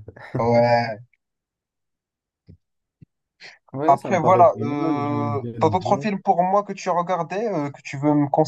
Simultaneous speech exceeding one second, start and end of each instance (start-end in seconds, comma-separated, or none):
3.9-6.1